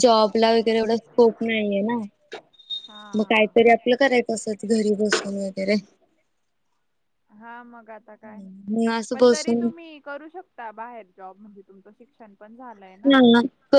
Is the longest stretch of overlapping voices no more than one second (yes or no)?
yes